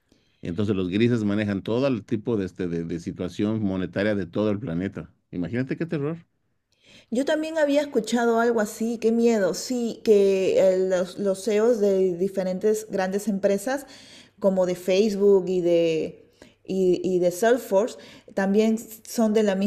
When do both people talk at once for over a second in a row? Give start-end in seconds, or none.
none